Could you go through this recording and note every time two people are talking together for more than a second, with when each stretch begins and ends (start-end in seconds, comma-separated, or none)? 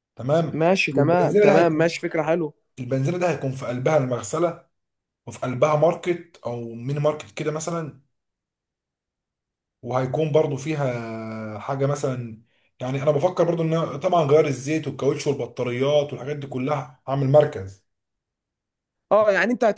0.5-2.0